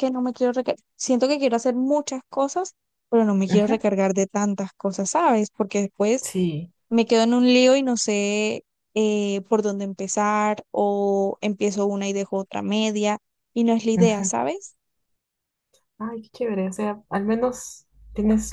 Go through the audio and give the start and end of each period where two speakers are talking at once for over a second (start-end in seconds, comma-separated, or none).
none